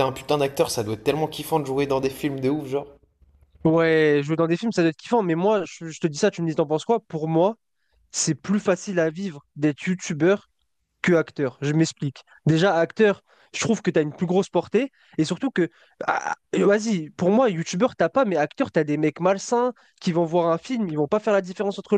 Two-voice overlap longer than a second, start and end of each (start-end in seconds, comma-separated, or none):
none